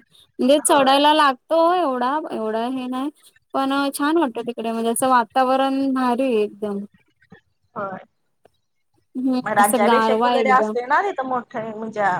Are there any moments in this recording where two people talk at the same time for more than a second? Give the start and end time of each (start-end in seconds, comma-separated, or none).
9.4-10.7